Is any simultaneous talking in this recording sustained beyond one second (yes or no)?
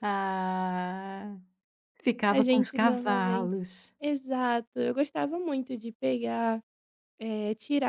yes